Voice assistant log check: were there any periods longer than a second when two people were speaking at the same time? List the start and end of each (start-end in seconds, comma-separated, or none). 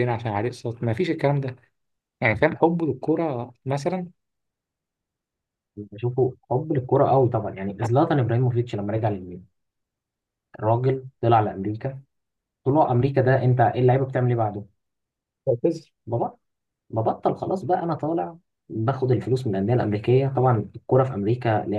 none